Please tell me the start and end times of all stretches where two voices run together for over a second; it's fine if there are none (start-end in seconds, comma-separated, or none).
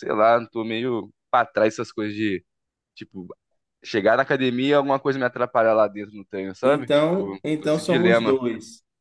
6.6-8.4